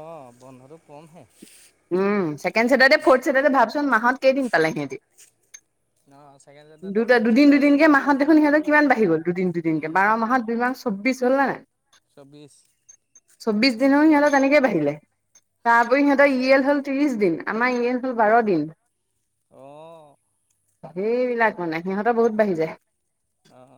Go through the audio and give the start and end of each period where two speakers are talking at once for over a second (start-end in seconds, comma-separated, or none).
7.0-8.9